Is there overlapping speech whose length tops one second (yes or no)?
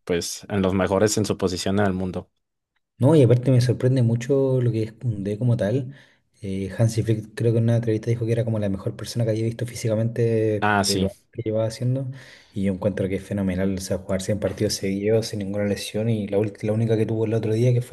no